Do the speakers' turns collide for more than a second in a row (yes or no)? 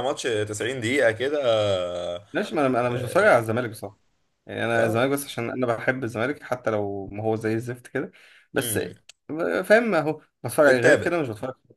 no